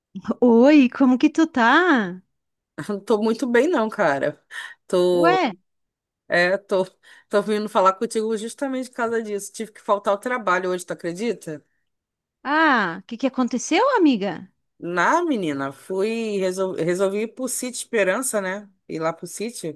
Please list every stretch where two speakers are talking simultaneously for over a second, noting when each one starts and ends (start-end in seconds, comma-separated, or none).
none